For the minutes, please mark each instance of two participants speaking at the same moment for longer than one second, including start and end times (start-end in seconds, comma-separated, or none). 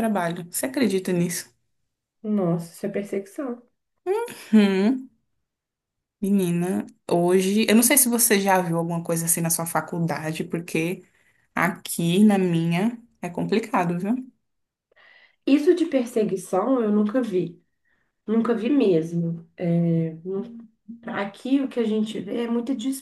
none